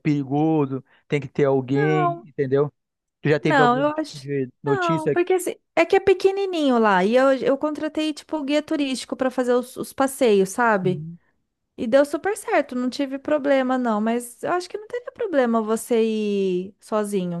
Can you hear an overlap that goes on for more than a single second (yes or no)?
yes